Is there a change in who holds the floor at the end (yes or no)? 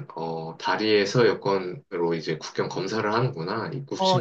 yes